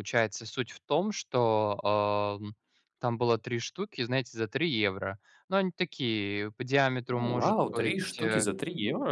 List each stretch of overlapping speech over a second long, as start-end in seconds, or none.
7.1-8.5